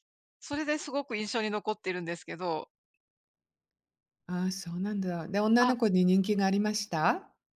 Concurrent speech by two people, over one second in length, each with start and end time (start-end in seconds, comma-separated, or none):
none